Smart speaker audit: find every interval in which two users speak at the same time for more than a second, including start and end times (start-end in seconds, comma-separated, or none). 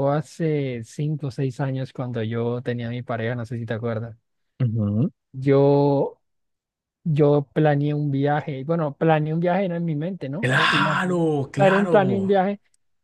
10.4-12.0